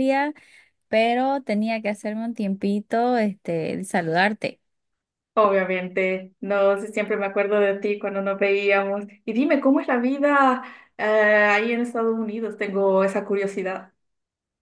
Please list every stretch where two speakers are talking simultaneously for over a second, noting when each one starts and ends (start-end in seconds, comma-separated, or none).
none